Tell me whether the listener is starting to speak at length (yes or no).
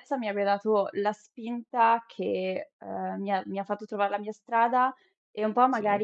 no